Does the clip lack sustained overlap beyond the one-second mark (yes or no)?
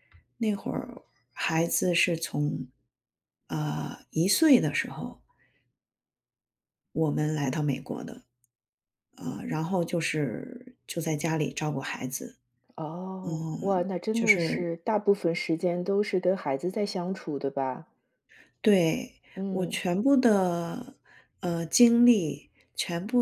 no